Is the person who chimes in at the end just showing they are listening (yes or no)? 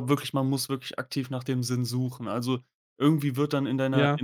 yes